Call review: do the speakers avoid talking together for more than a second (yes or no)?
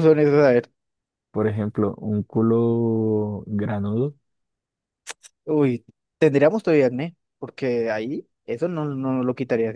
yes